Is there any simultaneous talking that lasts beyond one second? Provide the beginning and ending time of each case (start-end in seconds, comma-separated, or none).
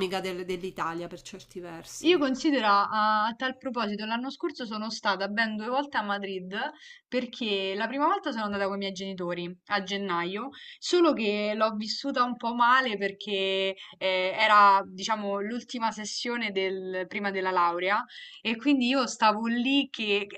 none